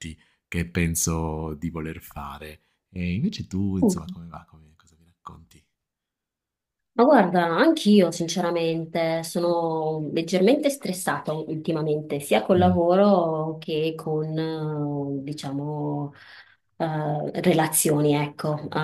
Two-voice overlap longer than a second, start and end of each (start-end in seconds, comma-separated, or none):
none